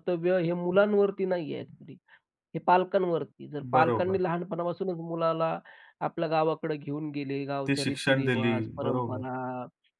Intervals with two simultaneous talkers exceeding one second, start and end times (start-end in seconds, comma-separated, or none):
7.7-9.2